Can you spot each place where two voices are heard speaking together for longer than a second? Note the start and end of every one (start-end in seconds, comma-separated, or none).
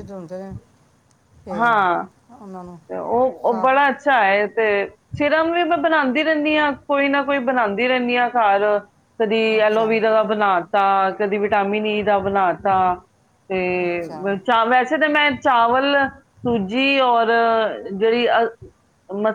none